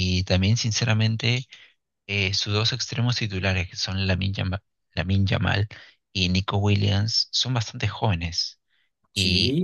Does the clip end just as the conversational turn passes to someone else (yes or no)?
no